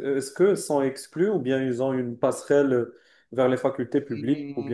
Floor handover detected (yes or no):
yes